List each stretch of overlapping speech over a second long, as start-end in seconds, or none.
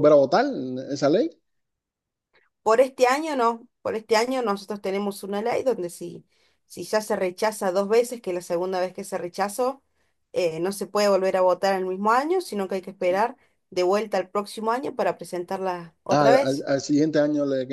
none